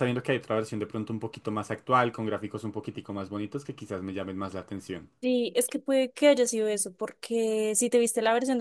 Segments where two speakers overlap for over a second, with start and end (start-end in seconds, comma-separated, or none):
none